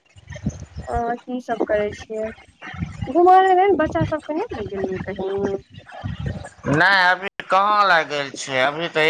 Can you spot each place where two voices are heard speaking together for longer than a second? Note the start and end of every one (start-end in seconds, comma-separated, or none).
none